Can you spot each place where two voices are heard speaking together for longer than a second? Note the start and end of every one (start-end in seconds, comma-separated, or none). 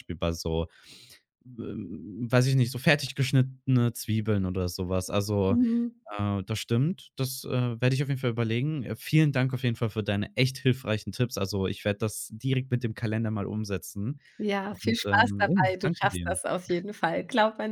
14.7-16.4